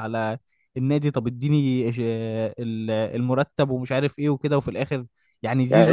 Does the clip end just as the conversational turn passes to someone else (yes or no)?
yes